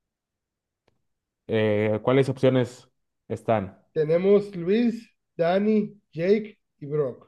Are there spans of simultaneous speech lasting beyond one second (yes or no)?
no